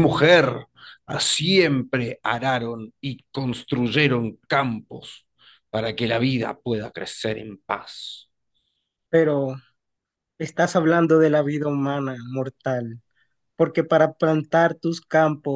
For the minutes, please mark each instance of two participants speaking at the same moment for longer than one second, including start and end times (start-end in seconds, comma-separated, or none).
none